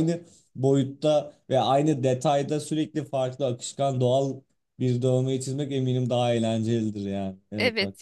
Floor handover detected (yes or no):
yes